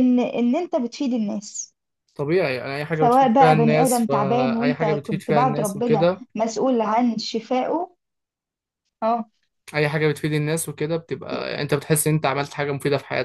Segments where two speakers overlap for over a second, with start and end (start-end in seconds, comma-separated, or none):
2.9-6.2